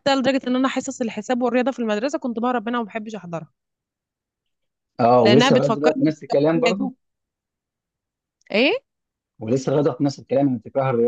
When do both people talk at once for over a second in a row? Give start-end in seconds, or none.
5.2-6.9